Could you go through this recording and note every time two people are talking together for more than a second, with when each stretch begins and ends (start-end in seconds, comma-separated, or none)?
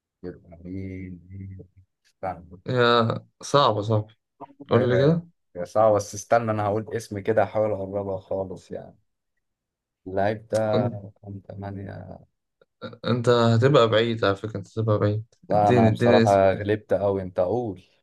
15.5-16.7